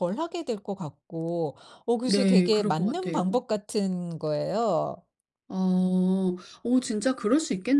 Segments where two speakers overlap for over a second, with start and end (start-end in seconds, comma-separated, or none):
2.0-3.4